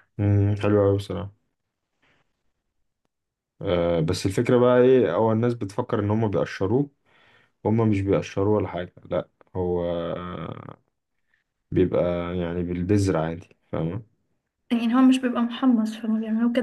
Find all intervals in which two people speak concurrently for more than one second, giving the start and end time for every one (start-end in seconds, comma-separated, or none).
none